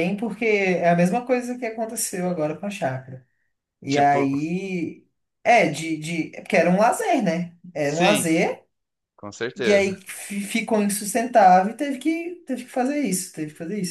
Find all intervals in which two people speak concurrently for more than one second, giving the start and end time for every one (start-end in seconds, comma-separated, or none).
none